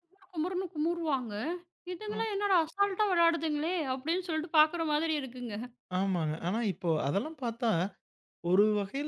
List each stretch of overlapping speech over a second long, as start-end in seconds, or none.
none